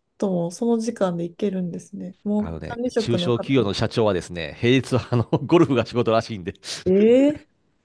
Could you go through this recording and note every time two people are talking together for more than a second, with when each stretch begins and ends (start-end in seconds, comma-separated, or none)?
2.4-3.7